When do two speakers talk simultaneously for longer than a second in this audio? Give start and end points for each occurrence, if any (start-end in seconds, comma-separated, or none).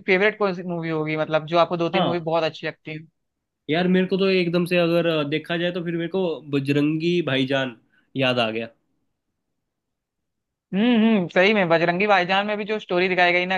none